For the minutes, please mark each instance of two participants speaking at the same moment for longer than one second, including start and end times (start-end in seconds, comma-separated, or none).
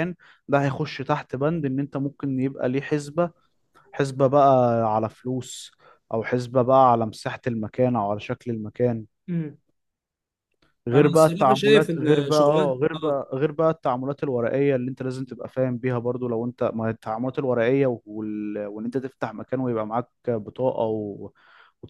10.9-13.2